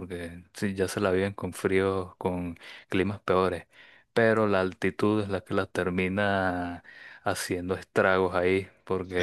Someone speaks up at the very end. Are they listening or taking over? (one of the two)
listening